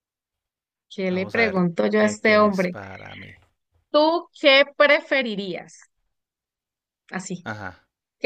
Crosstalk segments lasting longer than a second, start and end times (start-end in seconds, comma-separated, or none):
1.1-2.8